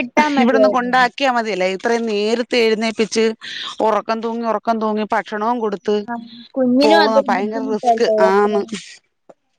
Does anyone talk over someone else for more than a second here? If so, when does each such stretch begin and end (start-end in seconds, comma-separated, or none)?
6.8-8.5